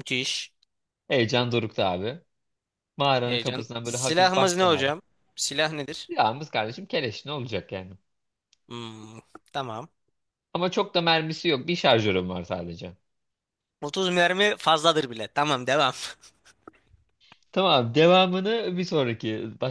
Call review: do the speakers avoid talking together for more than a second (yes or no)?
no